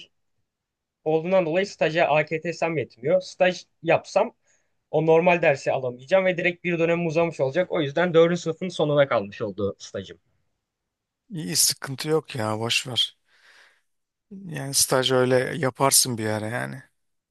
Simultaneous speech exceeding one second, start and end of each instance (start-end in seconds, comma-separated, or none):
none